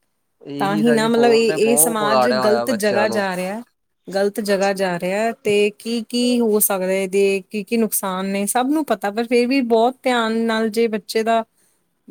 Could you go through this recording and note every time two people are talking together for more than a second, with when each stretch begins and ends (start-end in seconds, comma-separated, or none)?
0.6-3.3